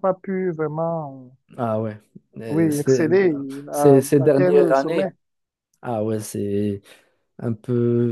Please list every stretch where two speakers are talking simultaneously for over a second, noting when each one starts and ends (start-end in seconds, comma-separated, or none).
3.7-5.1